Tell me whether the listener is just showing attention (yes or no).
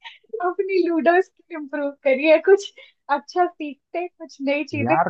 yes